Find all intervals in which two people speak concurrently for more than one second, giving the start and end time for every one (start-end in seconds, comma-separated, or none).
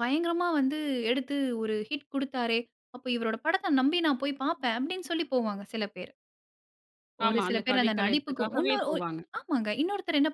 7.3-8.9